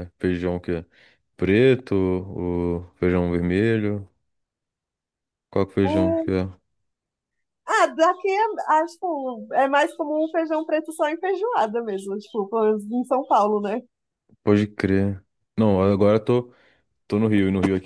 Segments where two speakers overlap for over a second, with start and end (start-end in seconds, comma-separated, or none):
none